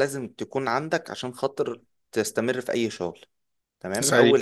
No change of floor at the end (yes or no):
yes